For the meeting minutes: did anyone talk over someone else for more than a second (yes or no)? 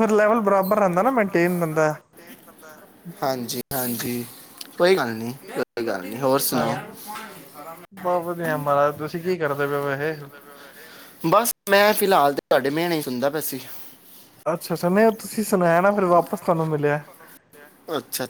no